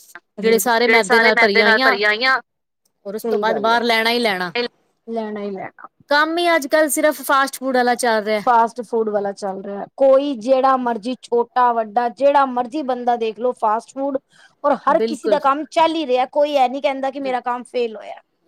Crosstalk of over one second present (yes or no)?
no